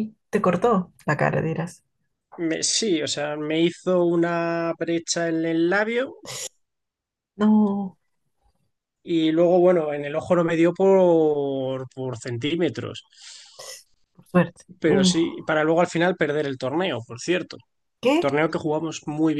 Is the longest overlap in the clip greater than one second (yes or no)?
no